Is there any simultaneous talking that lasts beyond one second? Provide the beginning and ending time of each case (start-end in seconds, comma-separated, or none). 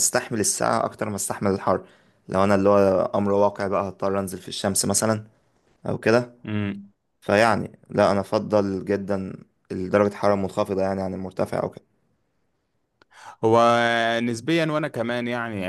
none